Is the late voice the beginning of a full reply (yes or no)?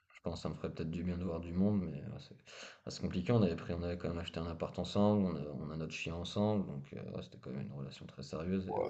yes